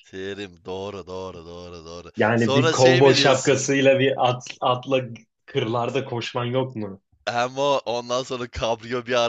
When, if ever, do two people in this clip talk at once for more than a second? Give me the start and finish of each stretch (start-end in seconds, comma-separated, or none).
2.2-3.6